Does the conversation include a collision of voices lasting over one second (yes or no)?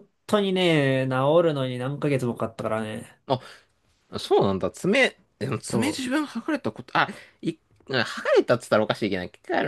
no